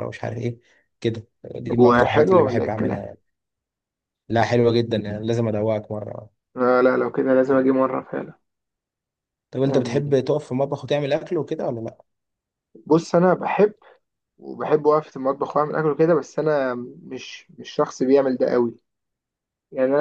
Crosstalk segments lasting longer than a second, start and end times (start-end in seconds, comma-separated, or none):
1.8-3.0